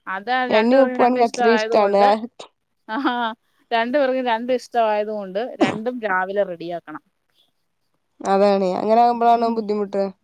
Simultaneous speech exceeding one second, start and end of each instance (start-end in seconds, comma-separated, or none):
0.6-2.0